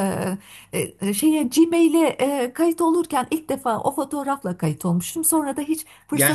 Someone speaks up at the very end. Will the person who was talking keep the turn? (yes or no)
no